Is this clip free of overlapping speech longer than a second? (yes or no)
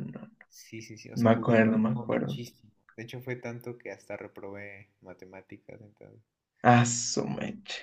no